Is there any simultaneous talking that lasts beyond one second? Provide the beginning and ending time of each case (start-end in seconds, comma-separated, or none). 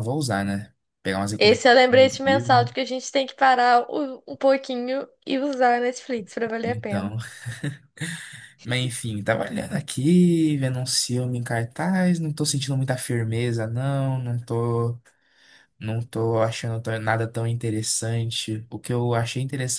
1.4-2.7